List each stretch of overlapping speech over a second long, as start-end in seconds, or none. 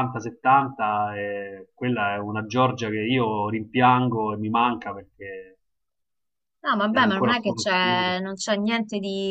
6.9-8.1